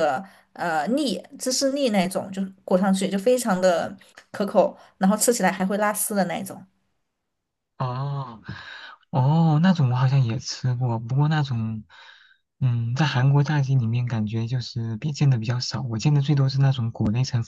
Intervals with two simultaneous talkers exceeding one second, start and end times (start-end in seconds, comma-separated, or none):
none